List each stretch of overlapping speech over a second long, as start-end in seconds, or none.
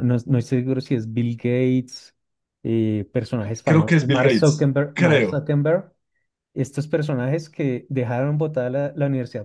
3.6-5.4